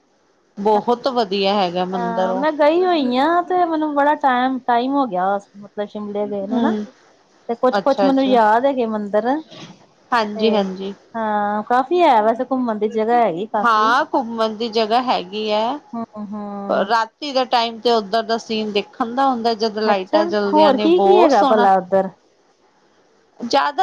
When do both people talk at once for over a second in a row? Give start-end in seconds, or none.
19.9-21.7